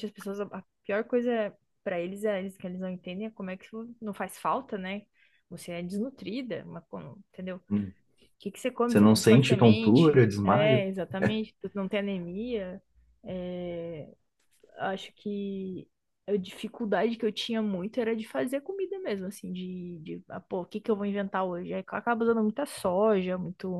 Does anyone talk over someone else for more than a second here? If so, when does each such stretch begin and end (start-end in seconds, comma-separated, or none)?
8.9-10.8